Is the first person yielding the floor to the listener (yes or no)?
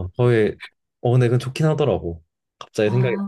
yes